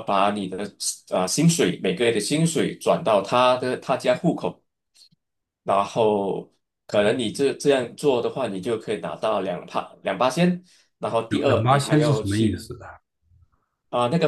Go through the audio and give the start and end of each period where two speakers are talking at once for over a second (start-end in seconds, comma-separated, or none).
11.3-12.6